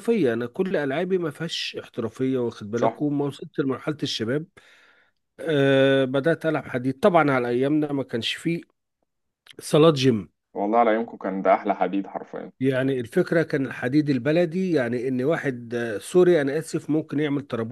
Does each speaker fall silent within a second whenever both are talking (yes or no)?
yes